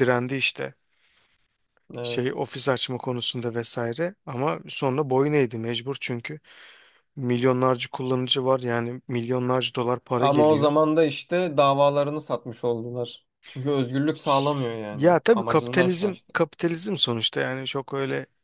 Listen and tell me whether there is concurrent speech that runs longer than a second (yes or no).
yes